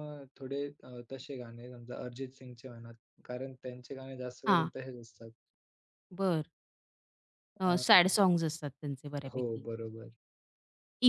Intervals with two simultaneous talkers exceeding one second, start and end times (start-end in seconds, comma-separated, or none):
none